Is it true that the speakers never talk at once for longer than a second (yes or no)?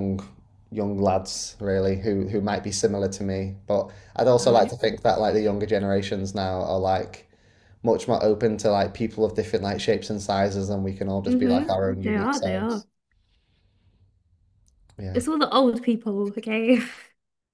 no